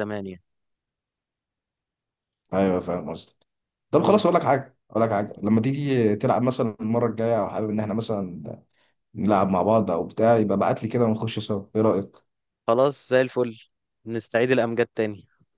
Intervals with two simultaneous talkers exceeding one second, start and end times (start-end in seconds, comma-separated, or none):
none